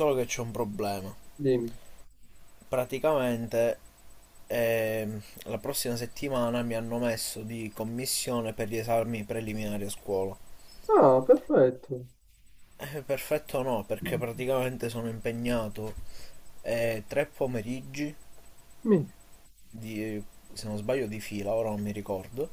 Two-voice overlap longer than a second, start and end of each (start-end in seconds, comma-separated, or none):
none